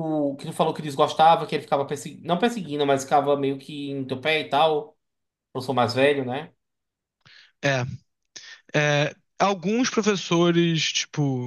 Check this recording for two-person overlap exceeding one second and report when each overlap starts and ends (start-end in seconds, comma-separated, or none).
none